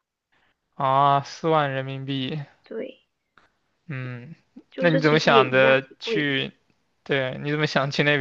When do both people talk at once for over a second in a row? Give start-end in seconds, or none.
4.8-6.3